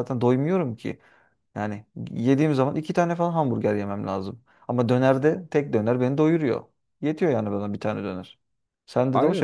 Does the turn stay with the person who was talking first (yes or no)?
no